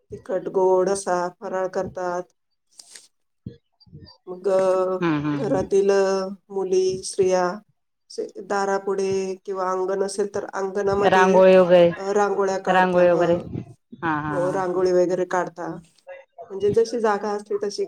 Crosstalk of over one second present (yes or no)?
no